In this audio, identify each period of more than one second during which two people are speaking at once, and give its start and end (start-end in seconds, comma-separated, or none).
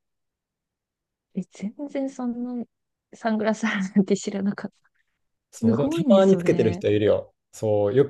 5.5-6.8